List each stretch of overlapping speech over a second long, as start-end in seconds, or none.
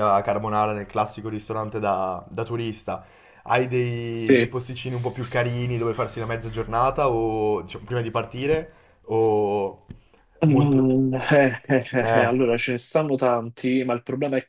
none